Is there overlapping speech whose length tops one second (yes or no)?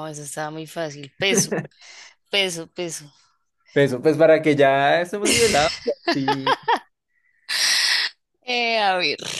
no